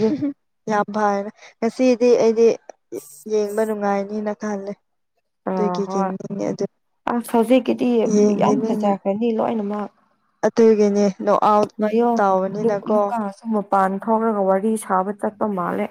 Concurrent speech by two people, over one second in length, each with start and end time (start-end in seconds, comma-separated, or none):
none